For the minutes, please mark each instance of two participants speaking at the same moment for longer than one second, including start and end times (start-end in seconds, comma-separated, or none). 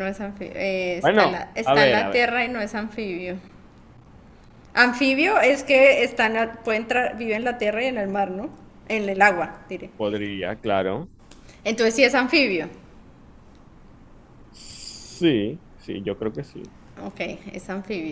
1.0-2.2